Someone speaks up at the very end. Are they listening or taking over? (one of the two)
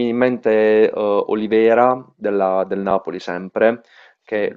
listening